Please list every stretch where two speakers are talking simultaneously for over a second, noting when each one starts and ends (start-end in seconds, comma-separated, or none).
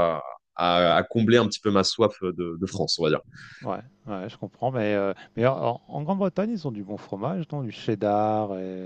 none